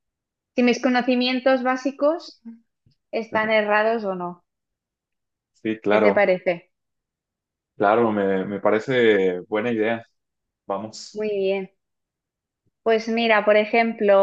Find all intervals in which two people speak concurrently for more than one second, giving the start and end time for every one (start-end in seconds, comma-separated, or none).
none